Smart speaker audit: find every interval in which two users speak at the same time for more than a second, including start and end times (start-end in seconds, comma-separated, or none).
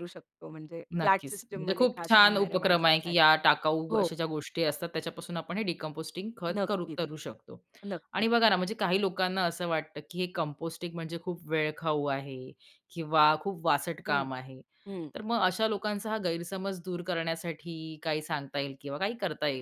1.0-3.3